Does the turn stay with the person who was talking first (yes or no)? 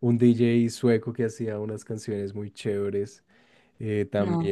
yes